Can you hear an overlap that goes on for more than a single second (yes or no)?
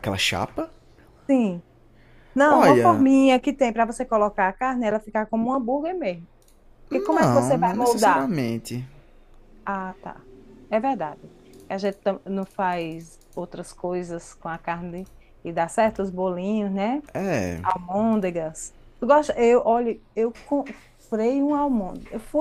yes